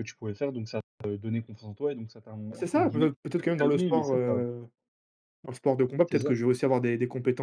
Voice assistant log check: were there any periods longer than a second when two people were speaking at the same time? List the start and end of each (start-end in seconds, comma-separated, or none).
2.5-4.4